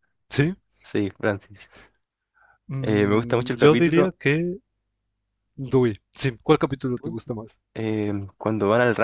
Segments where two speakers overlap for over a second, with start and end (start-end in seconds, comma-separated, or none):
2.8-4.2